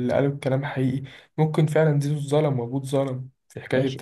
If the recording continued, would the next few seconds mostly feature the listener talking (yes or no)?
yes